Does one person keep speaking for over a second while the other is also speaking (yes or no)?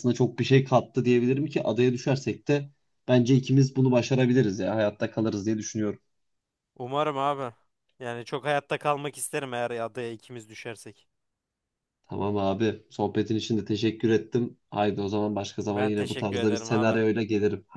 yes